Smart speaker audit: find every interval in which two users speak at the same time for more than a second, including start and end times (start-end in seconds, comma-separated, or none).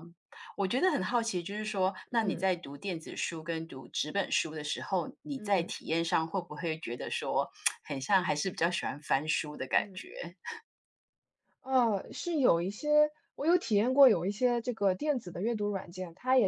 none